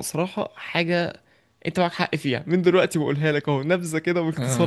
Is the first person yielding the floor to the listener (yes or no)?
no